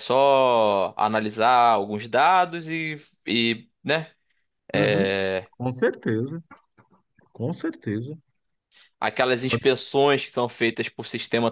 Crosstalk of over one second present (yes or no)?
no